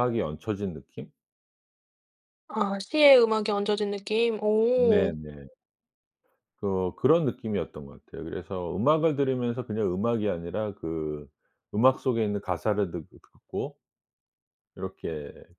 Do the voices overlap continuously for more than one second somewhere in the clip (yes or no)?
no